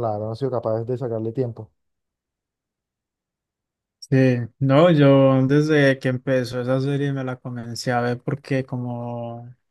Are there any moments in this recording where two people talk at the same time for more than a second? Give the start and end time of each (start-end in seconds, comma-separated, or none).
none